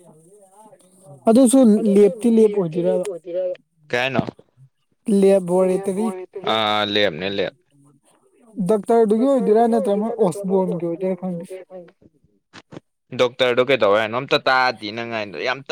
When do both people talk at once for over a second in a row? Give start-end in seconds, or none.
9.2-11.4